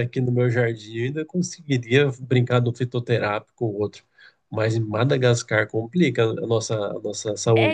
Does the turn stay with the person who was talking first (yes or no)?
no